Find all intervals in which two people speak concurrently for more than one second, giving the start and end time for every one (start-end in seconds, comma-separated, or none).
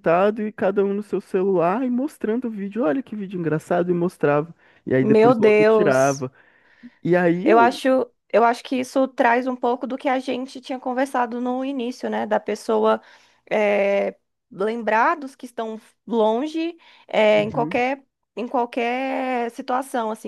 5.0-6.2